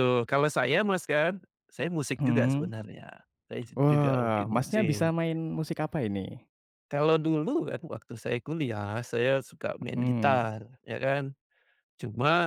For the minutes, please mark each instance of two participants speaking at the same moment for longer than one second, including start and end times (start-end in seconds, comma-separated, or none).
3.8-5.1